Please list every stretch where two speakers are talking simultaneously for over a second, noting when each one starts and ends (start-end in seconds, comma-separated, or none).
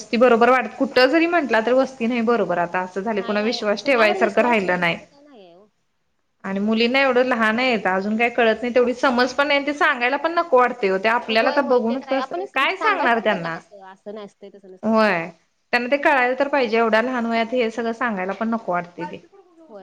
3.2-5.0, 11.4-13.2